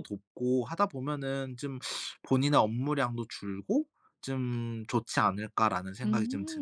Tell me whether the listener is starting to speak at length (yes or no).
yes